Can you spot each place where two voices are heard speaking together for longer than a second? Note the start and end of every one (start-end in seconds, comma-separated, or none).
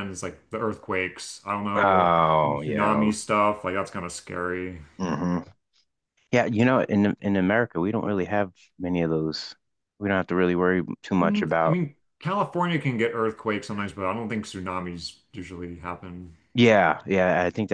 1.8-3.1